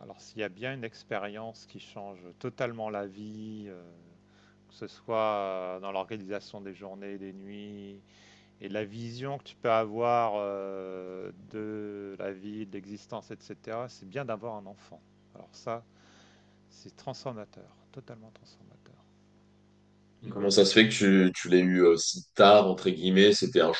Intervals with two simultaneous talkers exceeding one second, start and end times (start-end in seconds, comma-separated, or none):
none